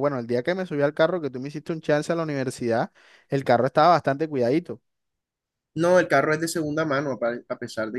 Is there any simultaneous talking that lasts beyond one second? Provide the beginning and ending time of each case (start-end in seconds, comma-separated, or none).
none